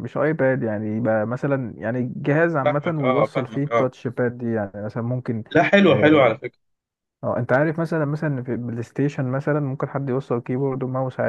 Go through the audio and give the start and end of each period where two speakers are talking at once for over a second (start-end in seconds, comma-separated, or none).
2.6-3.9